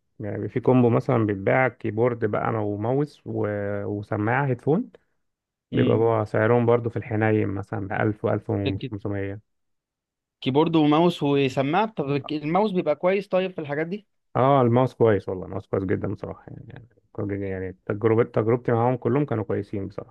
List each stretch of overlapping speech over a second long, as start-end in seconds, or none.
none